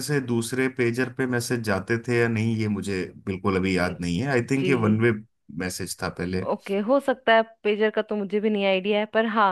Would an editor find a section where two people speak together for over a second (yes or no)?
no